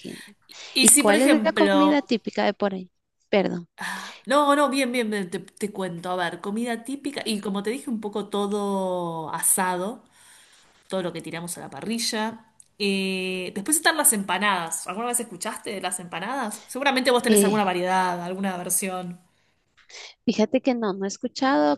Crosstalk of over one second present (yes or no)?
yes